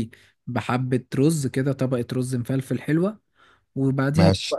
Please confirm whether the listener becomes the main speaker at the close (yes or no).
no